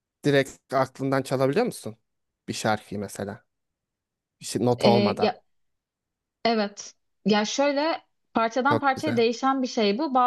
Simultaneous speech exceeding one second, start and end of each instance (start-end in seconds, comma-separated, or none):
none